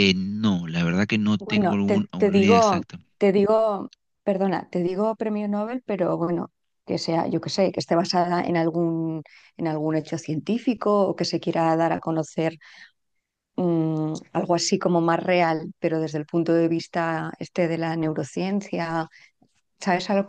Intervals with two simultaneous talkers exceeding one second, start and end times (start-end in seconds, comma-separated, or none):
1.4-3.0